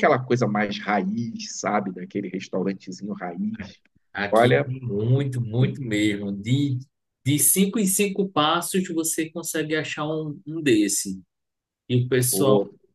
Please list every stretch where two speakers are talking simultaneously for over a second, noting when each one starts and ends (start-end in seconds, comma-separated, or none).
none